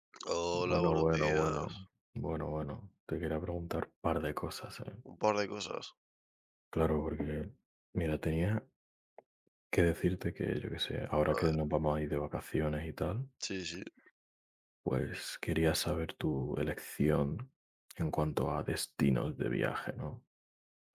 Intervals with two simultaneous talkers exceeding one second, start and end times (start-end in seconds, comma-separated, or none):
0.5-1.8